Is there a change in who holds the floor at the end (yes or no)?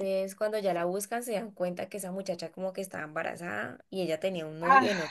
no